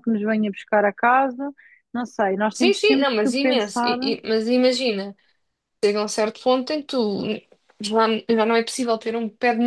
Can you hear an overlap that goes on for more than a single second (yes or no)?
yes